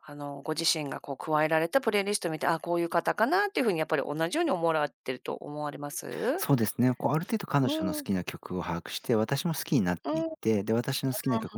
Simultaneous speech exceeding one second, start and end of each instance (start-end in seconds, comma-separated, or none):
none